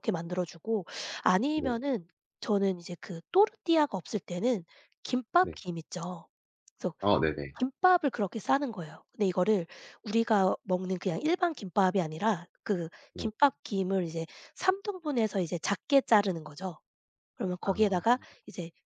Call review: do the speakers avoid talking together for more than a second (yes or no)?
yes